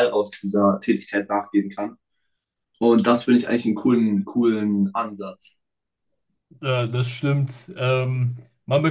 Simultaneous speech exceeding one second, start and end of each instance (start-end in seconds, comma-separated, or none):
none